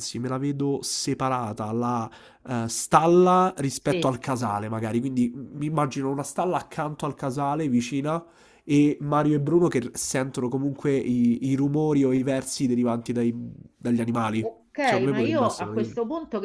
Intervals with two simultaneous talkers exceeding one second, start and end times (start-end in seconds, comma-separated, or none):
14.4-15.9